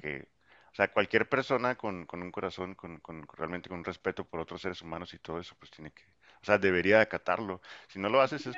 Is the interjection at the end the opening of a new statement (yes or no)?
yes